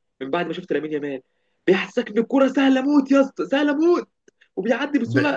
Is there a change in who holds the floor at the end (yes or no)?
no